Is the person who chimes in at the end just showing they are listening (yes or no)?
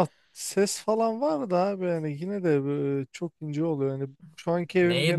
no